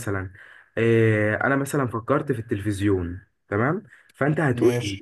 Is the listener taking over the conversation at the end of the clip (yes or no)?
no